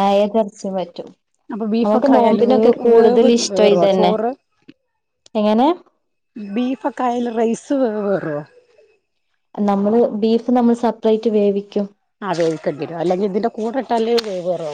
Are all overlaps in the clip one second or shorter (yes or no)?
no